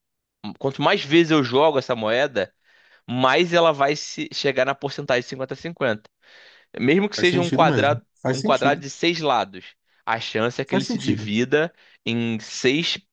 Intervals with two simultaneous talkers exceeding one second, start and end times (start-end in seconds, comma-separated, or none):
7.1-8.8